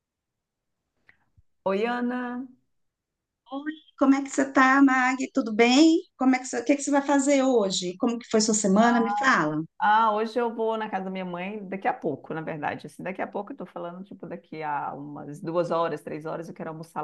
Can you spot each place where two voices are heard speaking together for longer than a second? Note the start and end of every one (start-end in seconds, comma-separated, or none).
none